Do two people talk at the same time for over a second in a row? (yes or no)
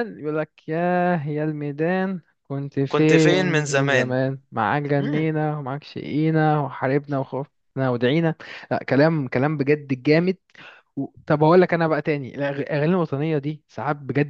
yes